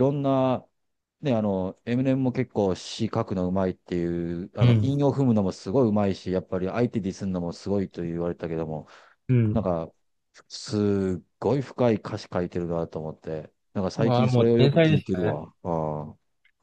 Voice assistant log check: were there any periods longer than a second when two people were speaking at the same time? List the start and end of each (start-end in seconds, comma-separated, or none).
14.0-15.4